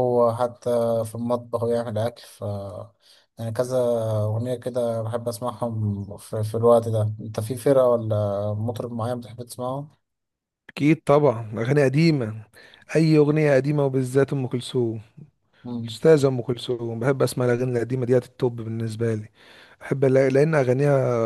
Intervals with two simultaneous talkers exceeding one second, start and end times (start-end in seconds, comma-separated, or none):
none